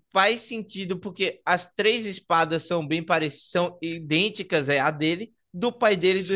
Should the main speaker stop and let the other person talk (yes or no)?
no